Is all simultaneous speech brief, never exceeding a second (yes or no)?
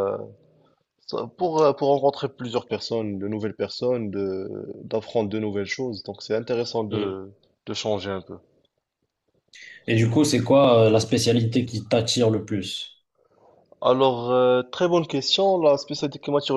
yes